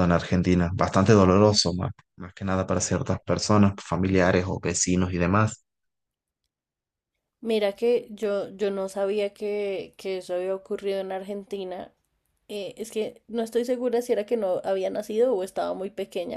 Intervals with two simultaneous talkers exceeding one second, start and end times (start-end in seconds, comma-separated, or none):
none